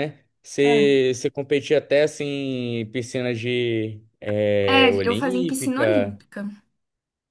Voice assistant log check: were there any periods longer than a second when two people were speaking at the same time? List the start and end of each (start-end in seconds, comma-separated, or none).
4.7-6.2